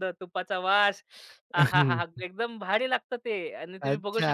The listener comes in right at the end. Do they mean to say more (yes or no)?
yes